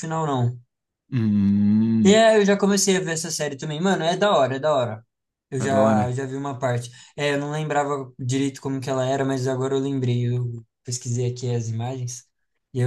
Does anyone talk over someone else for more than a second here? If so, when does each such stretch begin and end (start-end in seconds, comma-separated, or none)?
none